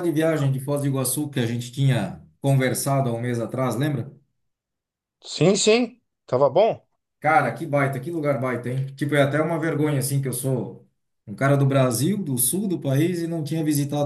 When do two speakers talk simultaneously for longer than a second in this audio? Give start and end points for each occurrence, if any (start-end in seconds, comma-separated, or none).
none